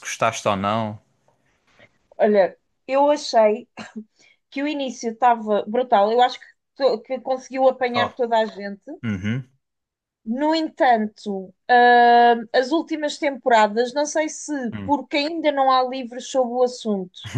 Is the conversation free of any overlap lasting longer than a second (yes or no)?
yes